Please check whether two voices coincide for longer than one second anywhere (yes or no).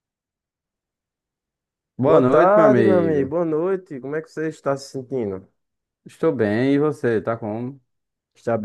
yes